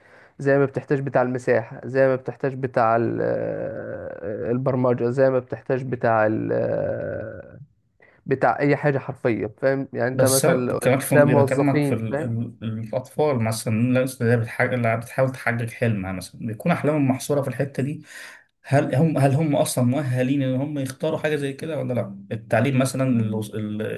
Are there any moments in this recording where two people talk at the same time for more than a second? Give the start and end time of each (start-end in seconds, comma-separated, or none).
10.1-12.3